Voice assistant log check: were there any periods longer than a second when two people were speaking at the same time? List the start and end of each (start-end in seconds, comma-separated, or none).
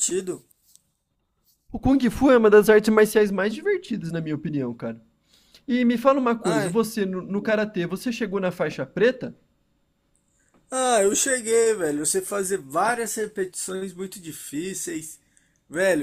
none